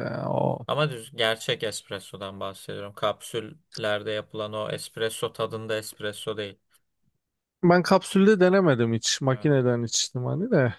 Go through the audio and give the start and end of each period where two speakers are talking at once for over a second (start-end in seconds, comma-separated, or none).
none